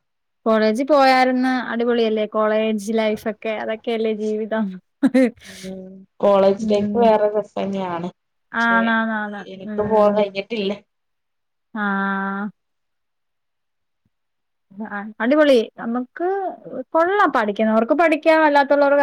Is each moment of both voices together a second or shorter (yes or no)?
yes